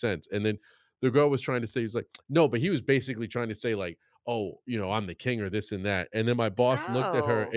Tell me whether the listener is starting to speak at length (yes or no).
no